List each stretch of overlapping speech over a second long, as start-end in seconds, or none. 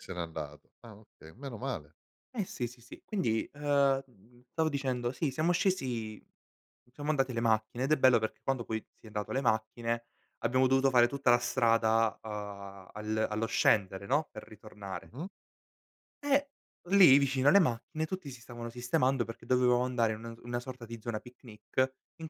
none